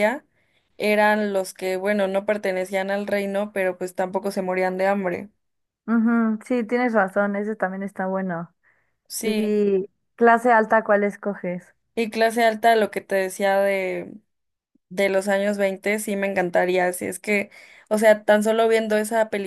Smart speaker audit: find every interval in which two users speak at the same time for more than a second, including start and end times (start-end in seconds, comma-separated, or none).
none